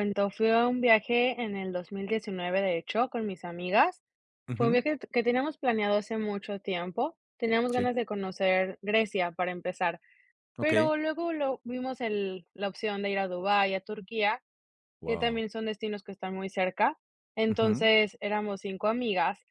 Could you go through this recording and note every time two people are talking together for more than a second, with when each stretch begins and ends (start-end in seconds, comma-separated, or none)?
none